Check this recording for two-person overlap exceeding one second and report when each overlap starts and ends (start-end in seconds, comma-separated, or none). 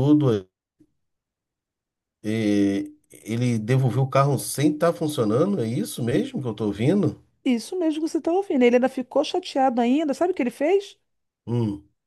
none